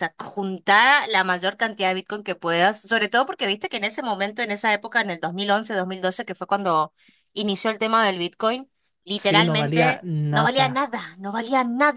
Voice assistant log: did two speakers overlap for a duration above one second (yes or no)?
yes